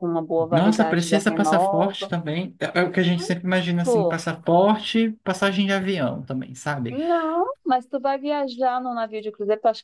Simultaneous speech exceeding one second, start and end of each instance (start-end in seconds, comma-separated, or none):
0.5-2.1